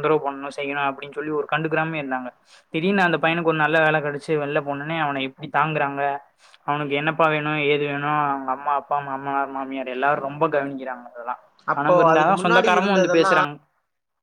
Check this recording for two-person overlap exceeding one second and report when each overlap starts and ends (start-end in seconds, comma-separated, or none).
11.8-13.3